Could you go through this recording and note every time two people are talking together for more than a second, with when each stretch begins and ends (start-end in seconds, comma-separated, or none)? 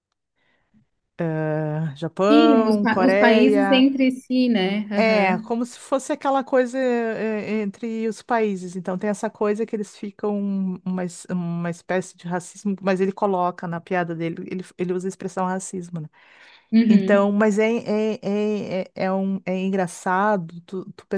2.3-3.9